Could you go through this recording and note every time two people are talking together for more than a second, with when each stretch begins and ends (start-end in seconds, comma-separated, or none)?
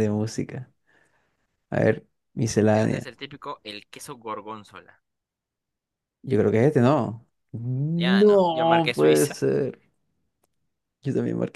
7.9-9.4